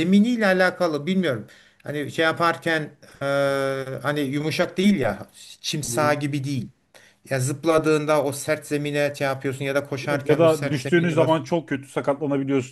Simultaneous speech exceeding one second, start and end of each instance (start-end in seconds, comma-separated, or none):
10.1-11.5